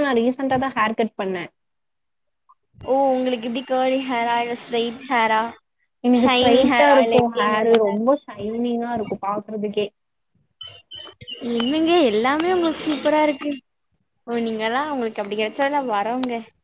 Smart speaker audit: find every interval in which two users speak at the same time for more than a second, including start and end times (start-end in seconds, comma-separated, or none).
6.2-8.0